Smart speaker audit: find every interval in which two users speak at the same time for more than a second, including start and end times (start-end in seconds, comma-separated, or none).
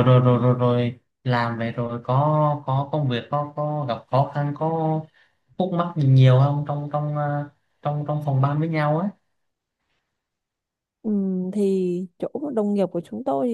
none